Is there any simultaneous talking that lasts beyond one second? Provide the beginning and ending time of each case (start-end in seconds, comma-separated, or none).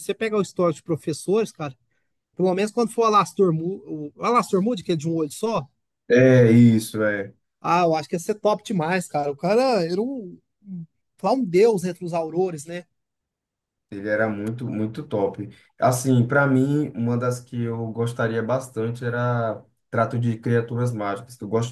none